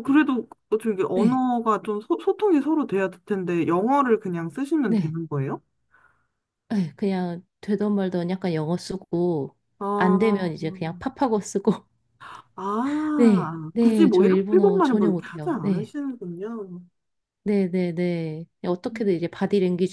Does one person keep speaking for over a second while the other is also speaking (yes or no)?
yes